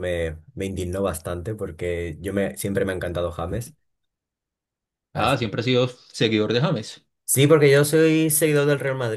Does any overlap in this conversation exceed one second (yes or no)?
no